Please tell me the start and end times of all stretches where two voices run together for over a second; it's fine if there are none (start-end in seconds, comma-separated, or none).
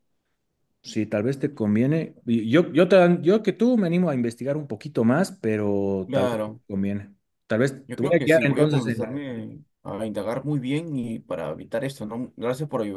7.9-9.2